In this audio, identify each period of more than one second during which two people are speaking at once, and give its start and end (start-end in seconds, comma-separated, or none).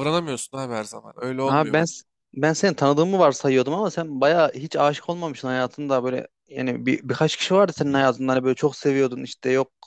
none